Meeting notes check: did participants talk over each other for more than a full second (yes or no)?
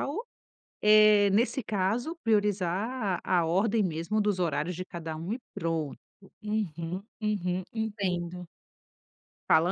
no